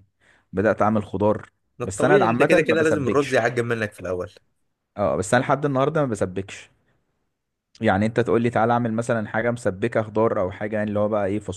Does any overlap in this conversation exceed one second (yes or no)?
yes